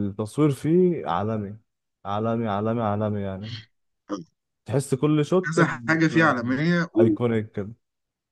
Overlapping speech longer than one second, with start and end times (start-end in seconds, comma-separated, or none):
none